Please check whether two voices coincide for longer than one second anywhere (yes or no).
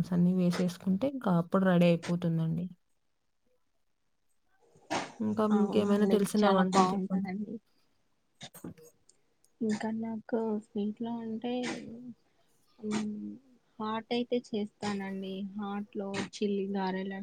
yes